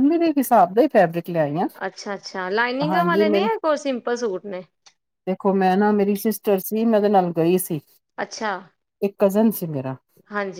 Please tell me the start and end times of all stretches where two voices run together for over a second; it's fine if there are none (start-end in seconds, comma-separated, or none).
none